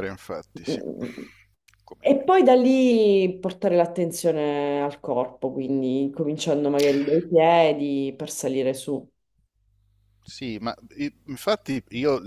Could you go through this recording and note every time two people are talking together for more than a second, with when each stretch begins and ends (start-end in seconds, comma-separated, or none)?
none